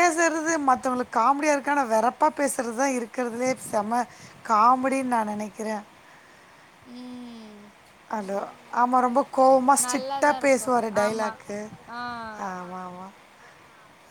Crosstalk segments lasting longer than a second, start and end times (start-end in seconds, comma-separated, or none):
9.8-11.3